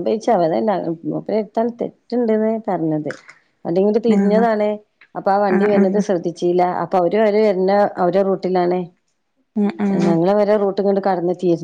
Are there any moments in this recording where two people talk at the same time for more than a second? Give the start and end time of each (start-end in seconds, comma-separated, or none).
none